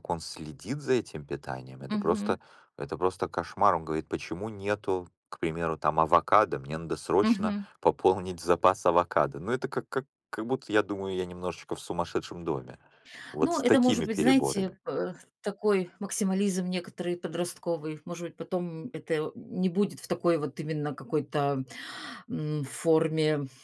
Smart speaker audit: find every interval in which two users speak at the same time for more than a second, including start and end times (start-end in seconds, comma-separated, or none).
13.4-14.8